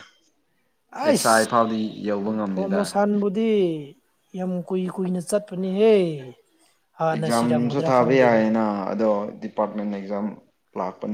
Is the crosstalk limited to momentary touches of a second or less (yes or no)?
no